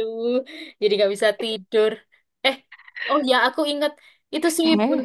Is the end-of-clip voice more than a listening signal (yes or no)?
no